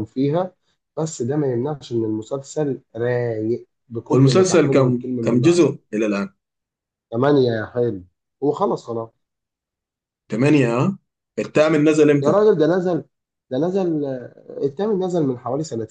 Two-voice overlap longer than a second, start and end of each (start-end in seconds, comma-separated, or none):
4.1-5.6